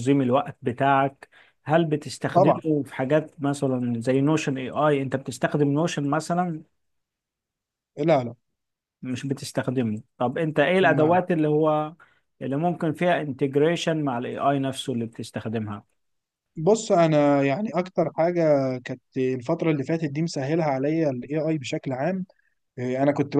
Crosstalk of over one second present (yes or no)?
no